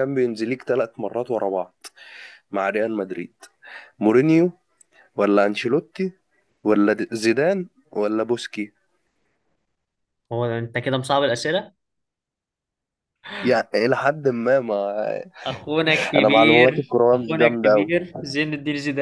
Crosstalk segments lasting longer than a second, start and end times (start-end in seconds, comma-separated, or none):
16.1-17.9